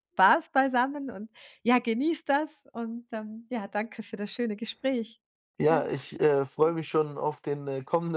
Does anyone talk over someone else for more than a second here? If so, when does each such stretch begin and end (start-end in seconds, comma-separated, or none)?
none